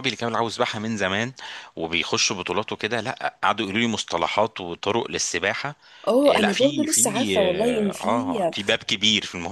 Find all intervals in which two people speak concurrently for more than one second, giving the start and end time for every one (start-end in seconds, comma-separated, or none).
6.3-8.4